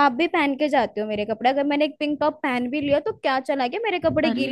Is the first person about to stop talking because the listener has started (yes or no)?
yes